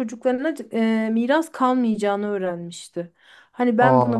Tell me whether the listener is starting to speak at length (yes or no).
no